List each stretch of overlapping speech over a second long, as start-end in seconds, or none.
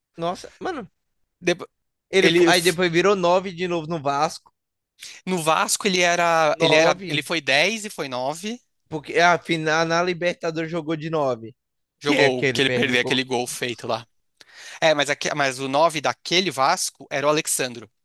12.0-13.2